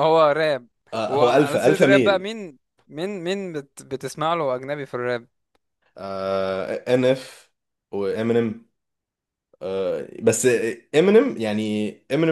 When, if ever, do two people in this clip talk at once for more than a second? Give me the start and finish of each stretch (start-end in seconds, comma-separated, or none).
1.1-2.3